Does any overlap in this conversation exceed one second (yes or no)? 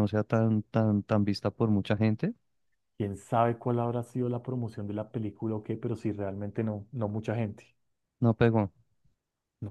no